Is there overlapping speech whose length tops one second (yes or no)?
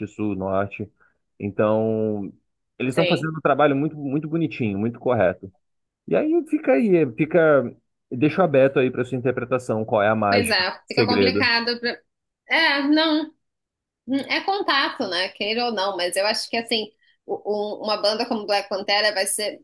yes